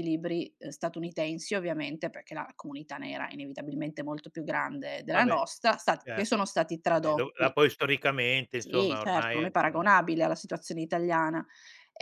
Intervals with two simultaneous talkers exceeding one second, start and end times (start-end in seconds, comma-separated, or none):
8.6-9.9